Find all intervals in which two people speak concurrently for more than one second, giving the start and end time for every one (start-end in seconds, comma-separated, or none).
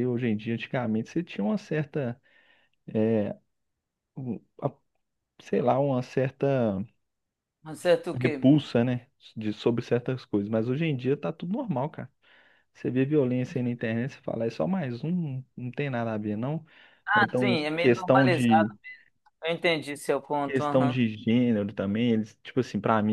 17.1-18.7